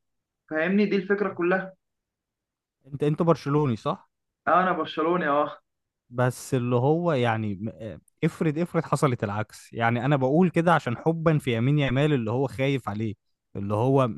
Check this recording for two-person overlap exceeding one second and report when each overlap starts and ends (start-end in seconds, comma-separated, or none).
none